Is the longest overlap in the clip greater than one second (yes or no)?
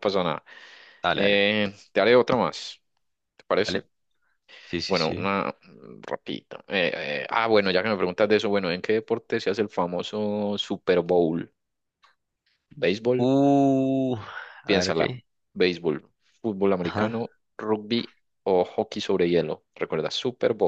no